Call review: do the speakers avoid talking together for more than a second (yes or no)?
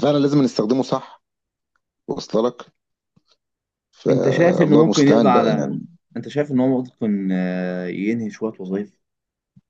no